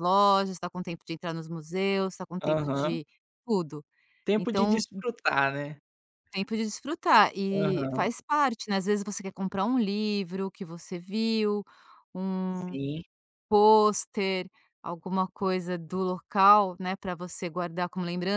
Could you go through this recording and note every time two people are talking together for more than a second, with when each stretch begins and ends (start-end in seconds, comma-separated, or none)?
none